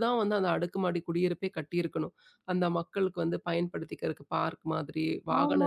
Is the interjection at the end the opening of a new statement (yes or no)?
yes